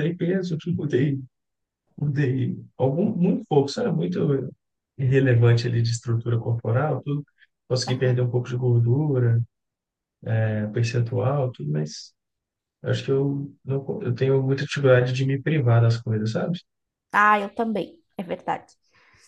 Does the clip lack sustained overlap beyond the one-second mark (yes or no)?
yes